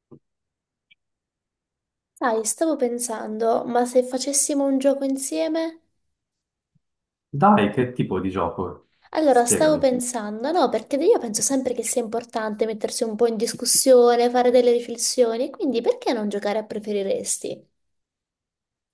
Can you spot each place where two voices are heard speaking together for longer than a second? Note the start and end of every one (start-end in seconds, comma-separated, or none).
none